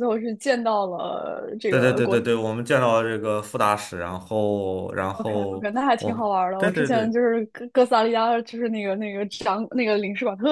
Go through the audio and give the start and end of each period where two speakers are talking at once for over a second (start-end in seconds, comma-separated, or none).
5.2-7.1